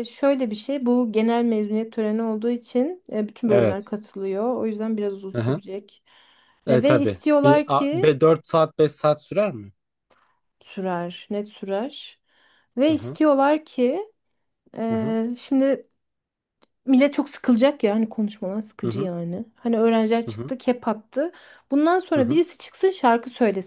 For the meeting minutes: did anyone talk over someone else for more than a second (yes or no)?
yes